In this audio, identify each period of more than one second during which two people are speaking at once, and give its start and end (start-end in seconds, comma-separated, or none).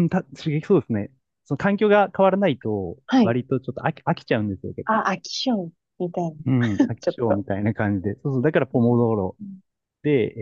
none